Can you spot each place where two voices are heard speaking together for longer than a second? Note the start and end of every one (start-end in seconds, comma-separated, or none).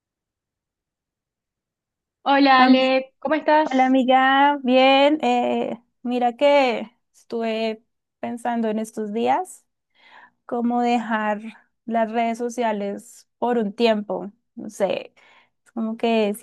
none